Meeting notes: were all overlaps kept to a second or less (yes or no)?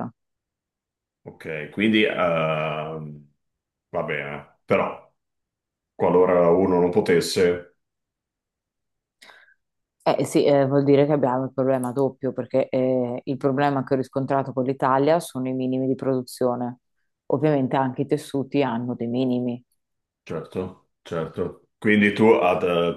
yes